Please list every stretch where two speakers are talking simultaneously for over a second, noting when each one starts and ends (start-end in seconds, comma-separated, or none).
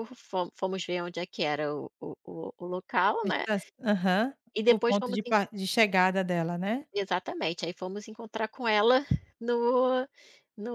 none